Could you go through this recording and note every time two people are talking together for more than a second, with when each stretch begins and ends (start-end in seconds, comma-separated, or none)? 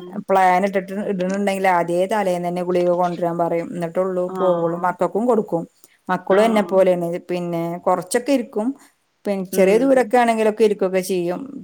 none